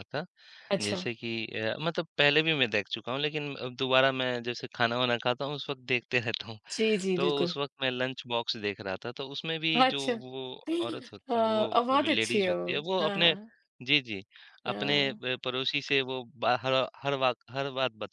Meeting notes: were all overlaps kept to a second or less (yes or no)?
no